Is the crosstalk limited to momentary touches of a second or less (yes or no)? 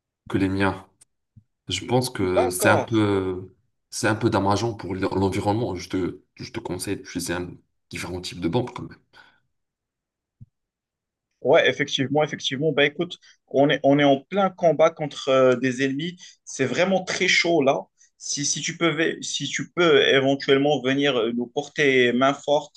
yes